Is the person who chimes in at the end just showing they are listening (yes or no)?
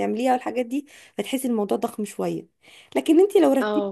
yes